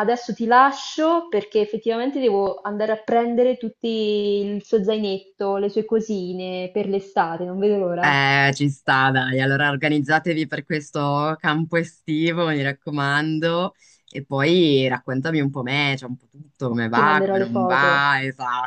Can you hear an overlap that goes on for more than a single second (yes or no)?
yes